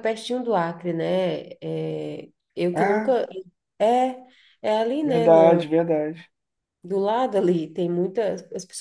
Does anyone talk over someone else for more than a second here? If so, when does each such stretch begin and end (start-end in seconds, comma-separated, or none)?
none